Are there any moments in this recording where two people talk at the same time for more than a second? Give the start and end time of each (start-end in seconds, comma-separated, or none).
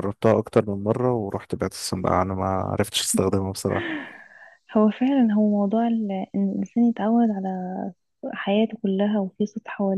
none